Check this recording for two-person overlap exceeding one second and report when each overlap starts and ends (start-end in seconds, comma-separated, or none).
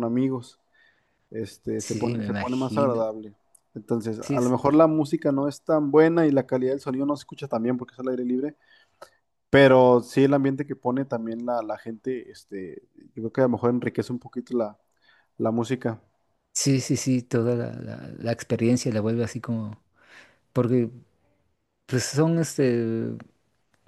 1.8-3.1